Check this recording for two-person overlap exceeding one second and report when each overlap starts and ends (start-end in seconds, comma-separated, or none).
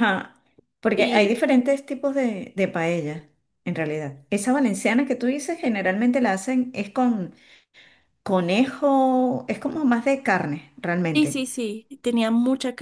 none